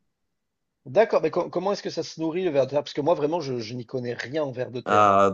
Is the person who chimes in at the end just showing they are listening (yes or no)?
no